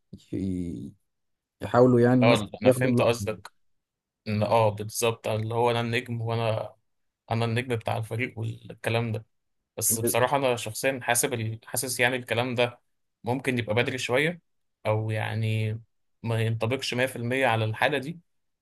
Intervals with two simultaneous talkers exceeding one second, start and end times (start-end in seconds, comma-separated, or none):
2.2-3.5